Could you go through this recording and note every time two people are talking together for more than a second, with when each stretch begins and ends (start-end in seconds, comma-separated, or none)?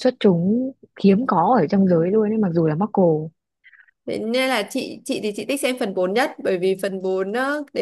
none